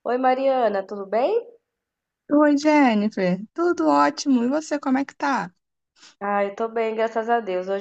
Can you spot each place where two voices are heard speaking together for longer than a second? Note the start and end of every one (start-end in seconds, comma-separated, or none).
none